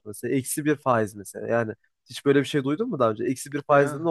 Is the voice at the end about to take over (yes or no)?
no